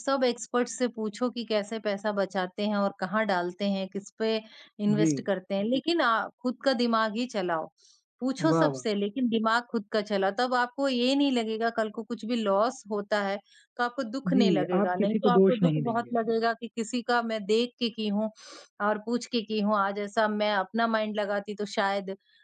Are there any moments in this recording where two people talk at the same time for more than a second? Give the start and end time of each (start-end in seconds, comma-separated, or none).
14.3-16.1